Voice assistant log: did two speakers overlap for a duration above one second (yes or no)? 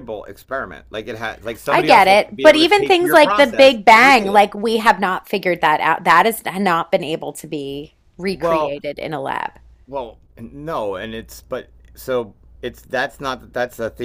yes